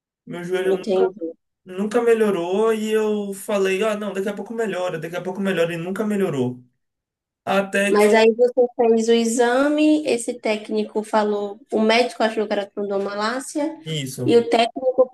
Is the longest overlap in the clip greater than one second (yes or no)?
no